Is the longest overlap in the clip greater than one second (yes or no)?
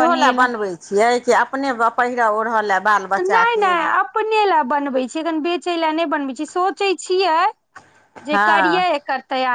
no